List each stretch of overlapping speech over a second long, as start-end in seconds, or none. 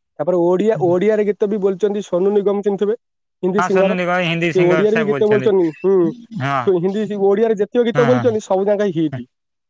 3.6-5.5